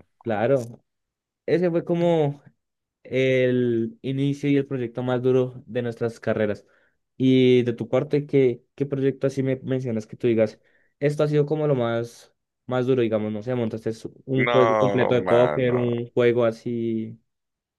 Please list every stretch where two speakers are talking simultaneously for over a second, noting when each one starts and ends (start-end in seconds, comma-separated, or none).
14.3-15.9